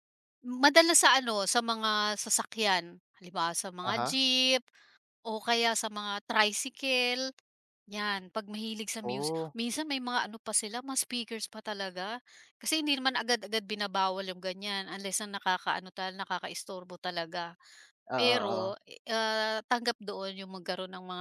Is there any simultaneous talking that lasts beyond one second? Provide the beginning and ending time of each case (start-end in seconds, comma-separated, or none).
none